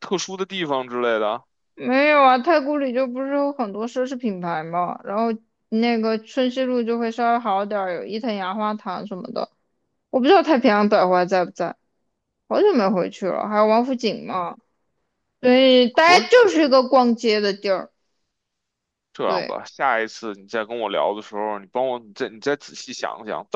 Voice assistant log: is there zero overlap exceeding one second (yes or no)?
yes